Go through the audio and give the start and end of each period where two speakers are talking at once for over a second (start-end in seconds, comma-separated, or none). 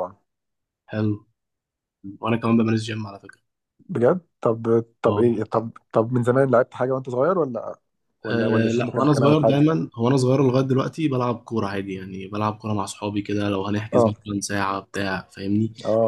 8.3-9.6